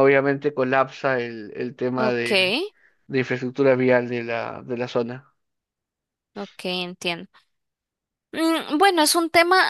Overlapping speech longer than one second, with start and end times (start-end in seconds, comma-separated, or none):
none